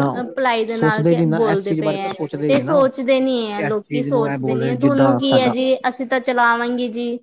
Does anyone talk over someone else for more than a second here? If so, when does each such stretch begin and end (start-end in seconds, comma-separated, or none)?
0.8-2.9, 3.7-5.5